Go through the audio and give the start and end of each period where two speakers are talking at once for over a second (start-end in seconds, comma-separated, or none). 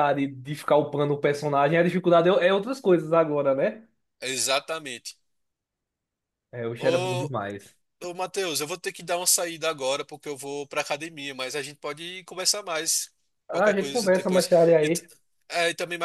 13.5-15.0